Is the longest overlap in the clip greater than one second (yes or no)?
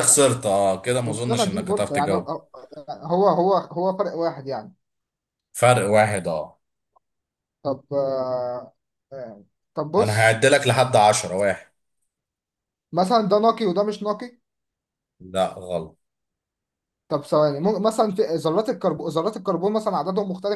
yes